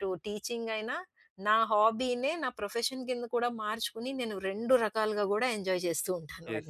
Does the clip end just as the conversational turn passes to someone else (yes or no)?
yes